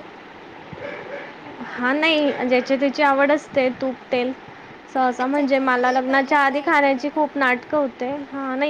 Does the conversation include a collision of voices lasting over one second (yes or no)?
yes